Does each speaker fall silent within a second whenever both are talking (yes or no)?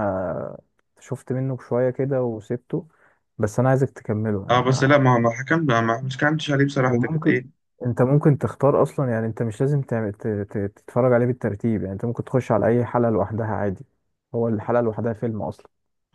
yes